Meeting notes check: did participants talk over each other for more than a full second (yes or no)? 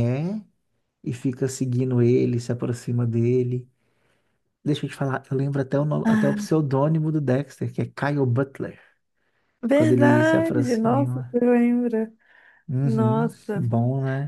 yes